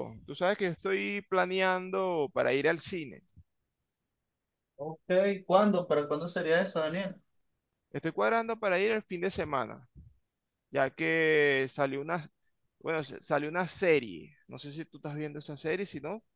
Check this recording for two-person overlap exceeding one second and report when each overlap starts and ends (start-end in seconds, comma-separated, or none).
none